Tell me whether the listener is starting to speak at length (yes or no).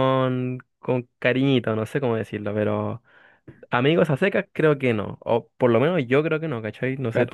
yes